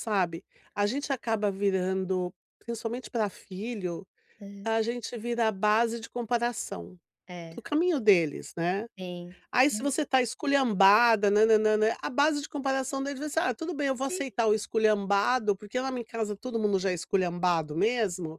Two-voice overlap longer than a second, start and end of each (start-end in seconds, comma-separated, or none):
none